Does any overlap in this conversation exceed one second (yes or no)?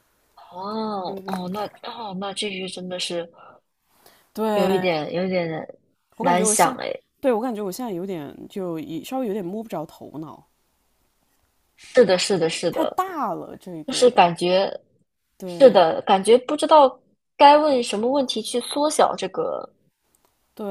no